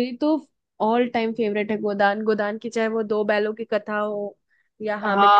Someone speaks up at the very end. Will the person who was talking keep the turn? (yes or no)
no